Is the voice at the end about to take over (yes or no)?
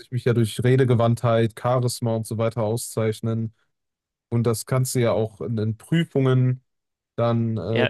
yes